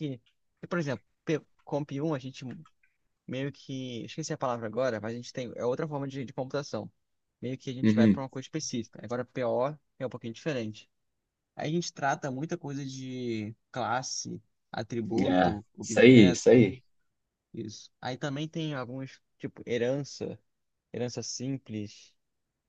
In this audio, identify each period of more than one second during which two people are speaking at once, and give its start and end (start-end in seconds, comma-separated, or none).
15.2-16.7